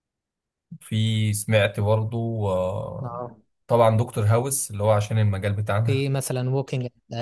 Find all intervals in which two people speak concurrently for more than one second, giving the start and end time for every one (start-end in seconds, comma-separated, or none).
none